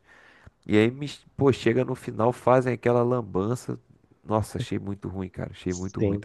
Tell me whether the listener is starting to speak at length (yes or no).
yes